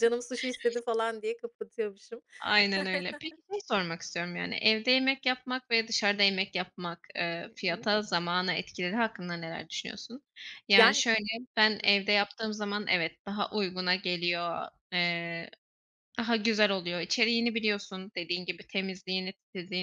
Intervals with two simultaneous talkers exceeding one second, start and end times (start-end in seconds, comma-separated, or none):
none